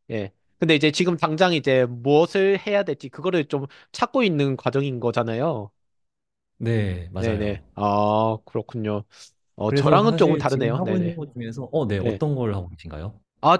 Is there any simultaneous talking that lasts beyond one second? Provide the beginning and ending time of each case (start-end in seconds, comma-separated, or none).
9.7-11.2